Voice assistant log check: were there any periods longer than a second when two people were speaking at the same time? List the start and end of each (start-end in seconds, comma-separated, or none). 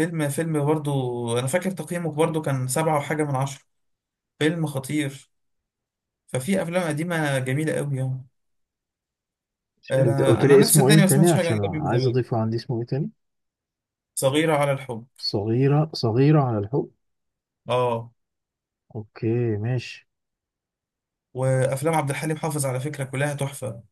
10.0-12.2